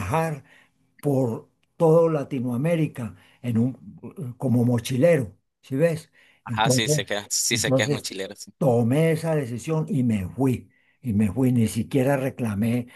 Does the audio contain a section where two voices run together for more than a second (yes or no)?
yes